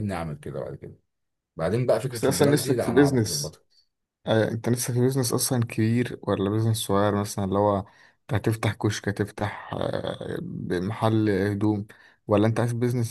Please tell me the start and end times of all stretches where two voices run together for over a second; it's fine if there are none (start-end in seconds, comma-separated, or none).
2.1-3.6